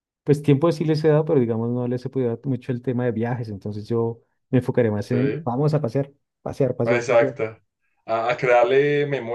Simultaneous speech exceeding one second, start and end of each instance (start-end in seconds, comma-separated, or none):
none